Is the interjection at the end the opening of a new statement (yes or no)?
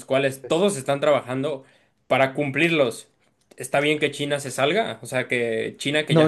yes